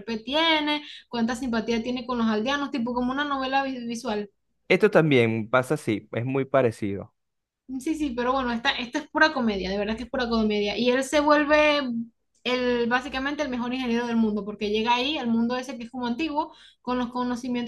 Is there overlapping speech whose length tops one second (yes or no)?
no